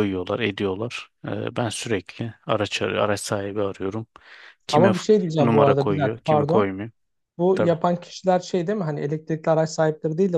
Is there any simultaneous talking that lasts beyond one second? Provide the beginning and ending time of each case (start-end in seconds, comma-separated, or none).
4.7-6.7